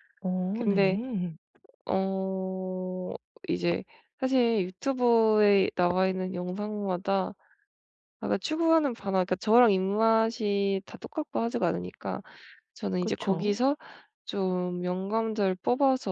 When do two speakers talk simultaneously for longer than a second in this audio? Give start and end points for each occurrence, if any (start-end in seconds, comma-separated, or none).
none